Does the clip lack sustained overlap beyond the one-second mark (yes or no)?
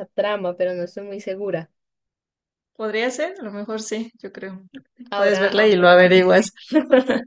no